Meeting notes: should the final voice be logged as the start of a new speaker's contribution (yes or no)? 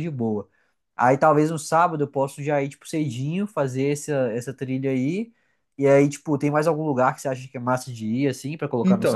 yes